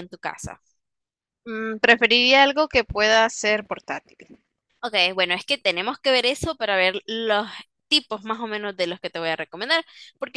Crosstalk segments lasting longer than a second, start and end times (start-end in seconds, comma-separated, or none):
none